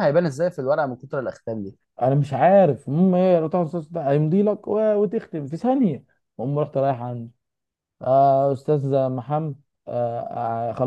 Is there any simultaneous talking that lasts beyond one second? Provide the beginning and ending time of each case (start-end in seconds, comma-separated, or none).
none